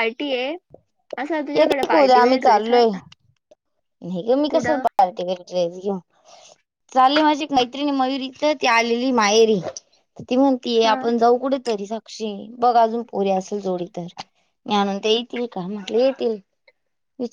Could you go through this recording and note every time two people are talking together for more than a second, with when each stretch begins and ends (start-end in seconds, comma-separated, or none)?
1.6-2.9